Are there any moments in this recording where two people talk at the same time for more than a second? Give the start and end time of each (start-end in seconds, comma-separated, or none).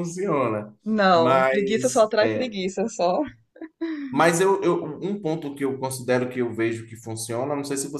1.1-2.5